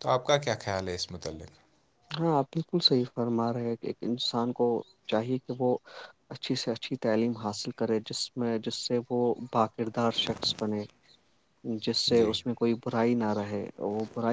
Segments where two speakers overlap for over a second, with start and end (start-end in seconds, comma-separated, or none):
none